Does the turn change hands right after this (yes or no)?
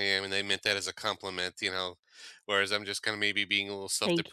no